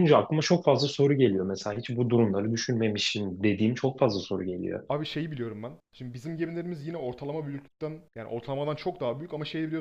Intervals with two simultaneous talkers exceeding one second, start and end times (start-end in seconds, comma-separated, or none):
none